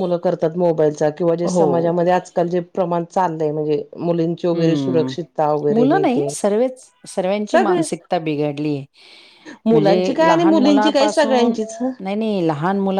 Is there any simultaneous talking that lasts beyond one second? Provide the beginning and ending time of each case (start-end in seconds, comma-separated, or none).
9.7-11.6